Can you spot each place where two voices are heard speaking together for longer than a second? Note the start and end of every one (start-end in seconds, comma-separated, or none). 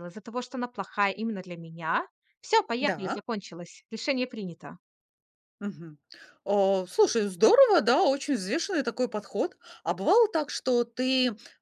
none